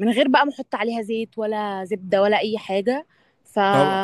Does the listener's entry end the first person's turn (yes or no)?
yes